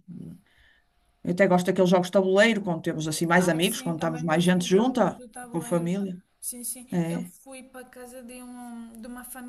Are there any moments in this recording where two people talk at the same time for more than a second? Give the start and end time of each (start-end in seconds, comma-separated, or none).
3.4-5.9